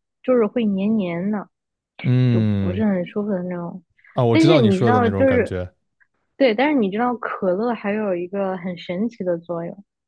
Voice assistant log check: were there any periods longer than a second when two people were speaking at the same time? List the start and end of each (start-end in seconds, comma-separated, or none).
4.3-5.5